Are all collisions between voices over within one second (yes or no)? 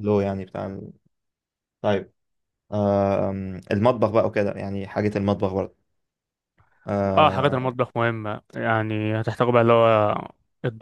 yes